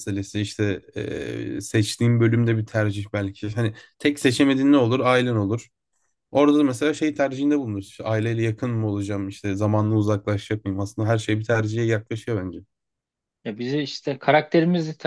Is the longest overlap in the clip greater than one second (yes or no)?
no